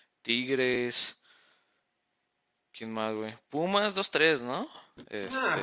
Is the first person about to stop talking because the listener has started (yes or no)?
yes